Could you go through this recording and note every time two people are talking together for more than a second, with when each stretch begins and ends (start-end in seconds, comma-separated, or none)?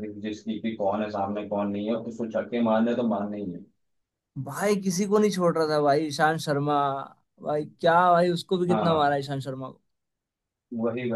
none